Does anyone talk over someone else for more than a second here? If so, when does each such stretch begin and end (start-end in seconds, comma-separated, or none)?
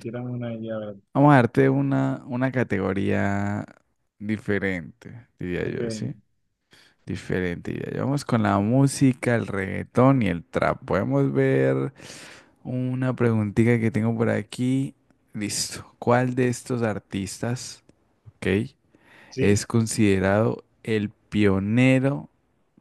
none